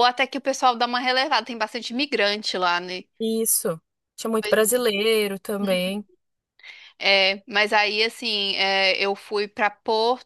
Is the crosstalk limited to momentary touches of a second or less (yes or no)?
yes